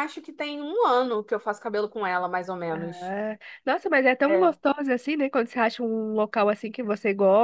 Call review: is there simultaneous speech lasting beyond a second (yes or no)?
no